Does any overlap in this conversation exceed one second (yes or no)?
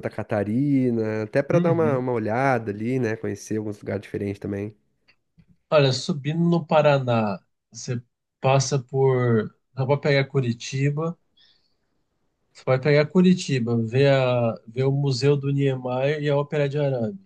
no